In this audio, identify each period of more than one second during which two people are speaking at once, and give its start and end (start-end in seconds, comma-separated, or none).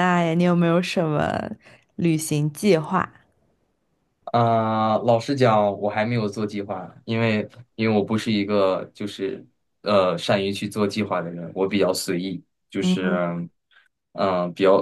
none